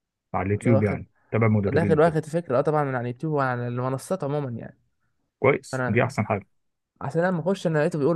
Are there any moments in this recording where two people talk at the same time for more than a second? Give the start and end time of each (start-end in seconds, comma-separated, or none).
none